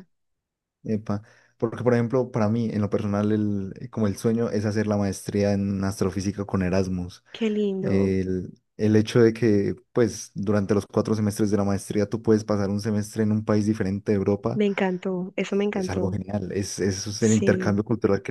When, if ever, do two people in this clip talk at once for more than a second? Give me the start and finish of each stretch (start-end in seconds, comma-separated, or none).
none